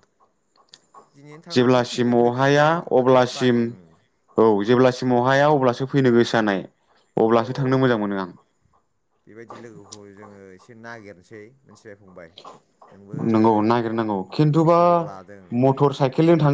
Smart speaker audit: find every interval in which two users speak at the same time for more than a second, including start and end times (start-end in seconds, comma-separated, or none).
1.5-3.6